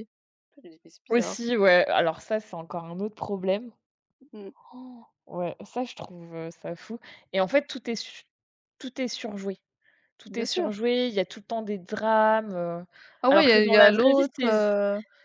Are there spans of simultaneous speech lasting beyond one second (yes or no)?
yes